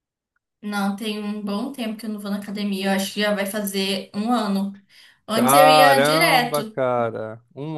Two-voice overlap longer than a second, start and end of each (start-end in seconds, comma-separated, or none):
5.3-6.8